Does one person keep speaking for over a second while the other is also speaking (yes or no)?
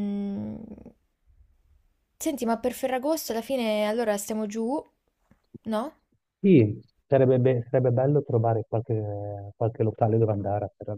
no